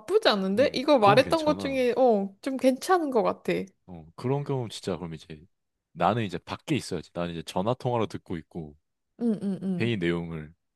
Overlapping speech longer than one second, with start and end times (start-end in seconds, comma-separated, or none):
0.6-1.8